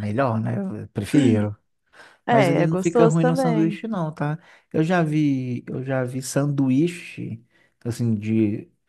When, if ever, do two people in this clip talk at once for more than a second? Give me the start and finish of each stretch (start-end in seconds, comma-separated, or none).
2.3-3.8